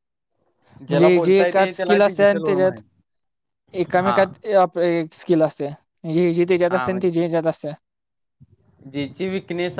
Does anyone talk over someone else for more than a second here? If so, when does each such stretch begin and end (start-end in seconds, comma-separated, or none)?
0.9-2.8